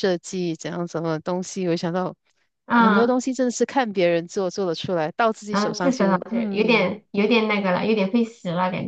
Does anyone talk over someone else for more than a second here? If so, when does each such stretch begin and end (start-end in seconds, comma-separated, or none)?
5.5-7.0